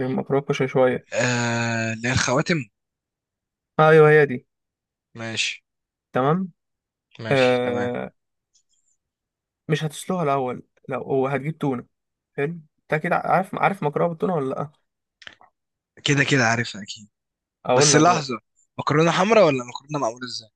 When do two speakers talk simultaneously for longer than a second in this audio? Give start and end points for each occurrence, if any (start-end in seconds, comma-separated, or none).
none